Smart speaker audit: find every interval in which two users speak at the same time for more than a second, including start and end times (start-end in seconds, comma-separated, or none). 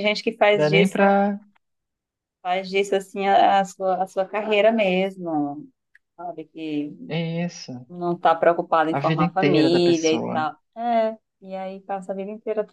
8.9-10.5